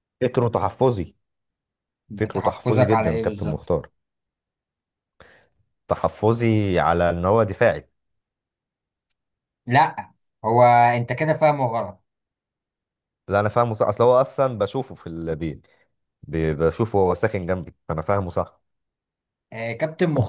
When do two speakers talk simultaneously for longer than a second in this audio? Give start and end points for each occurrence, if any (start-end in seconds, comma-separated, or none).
2.3-3.7